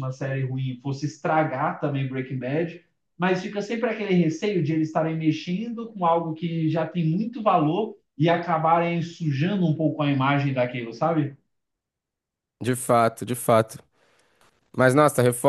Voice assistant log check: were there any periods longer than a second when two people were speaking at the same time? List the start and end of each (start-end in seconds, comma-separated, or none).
none